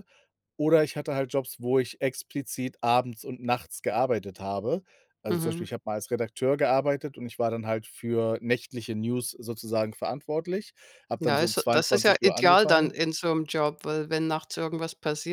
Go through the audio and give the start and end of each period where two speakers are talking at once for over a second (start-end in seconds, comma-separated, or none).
11.2-12.9